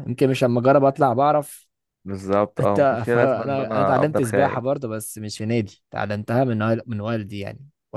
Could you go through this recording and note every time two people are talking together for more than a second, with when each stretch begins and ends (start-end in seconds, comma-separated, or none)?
2.6-4.6